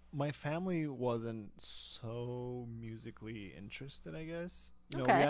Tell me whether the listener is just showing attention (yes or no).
yes